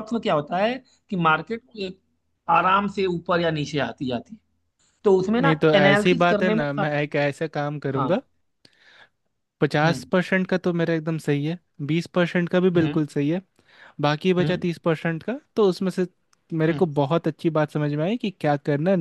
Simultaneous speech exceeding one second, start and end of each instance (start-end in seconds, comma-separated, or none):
5.4-6.9